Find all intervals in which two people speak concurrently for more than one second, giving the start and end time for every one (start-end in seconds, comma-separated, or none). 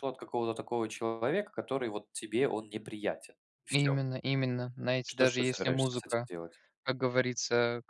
5.1-6.3